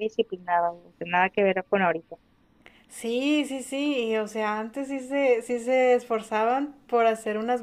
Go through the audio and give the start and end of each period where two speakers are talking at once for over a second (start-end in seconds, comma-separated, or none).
none